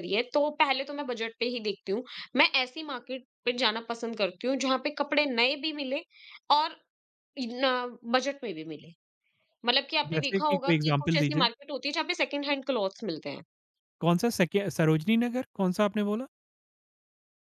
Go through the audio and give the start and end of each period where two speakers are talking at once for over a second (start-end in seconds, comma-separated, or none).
10.1-11.5